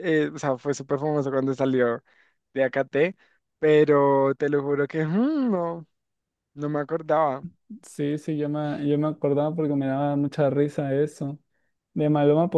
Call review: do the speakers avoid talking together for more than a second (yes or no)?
yes